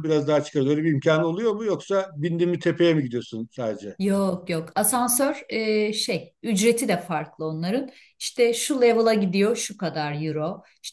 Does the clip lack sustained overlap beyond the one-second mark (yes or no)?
yes